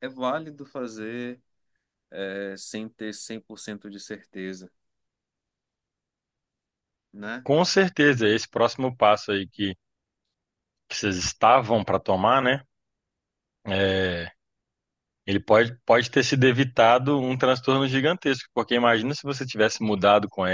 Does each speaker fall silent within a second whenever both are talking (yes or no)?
yes